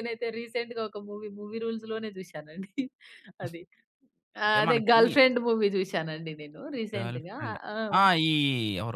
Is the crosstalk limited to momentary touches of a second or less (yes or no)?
yes